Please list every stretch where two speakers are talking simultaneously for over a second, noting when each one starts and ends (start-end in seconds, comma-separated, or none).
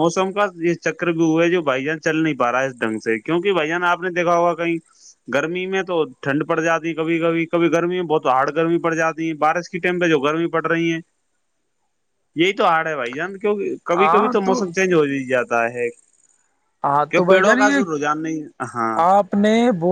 17.1-19.0